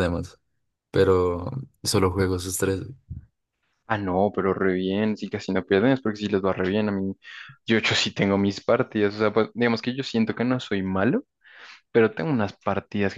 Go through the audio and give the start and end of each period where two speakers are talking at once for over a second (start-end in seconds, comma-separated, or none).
none